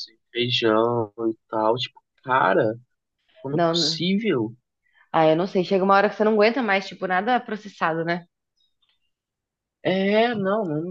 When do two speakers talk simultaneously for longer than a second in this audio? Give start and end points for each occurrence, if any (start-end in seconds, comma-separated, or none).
none